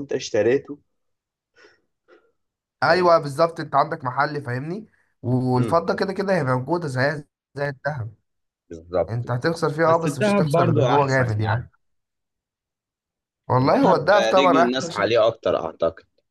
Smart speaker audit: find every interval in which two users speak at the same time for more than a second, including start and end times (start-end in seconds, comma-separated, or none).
9.1-11.7, 13.6-15.2